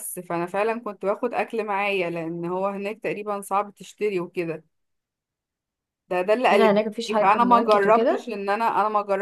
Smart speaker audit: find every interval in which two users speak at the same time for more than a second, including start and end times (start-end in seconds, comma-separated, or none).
6.5-8.3